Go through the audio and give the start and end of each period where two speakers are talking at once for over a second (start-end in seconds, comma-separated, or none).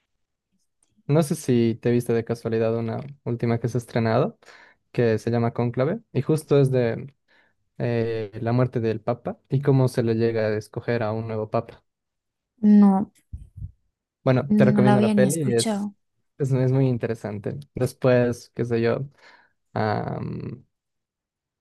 14.5-15.9